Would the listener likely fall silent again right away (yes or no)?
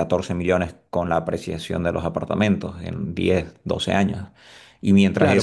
no